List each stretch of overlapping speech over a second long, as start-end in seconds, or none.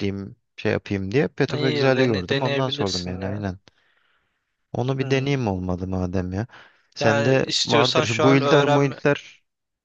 1.6-3.5, 7.0-8.9